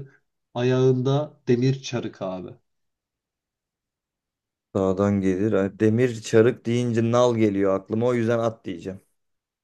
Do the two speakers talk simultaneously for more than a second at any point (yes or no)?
no